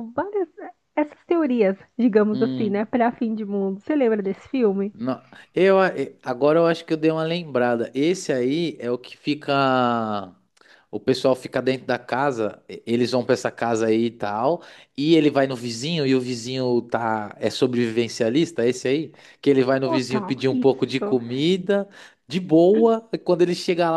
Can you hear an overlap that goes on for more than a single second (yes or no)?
yes